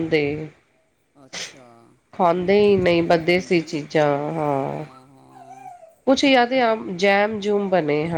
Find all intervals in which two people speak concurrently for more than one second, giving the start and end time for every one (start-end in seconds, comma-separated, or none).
2.4-3.8